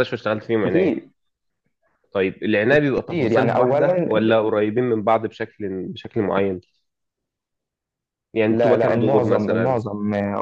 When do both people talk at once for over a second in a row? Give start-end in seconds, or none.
2.7-4.1, 8.5-9.8